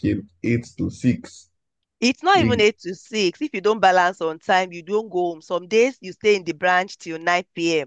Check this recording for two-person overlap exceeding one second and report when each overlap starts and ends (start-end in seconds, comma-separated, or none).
none